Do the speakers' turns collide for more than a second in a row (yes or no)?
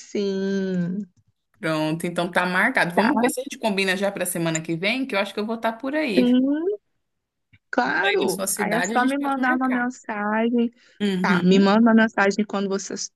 yes